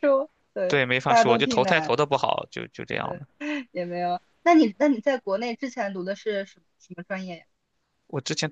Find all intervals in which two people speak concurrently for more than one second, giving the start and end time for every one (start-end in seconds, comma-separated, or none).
0.7-1.9